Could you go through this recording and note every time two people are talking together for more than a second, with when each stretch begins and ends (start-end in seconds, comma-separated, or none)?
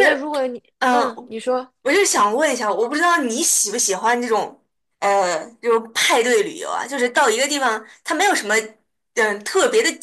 none